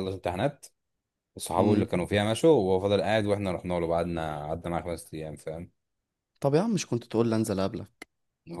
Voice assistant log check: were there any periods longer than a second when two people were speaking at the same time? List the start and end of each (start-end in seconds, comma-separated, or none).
none